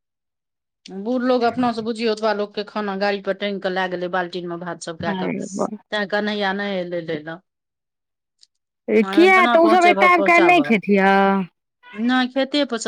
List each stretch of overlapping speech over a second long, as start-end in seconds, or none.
9.1-10.7